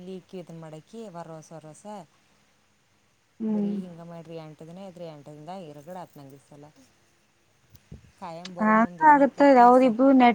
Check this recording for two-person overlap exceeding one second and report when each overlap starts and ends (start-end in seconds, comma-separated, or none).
none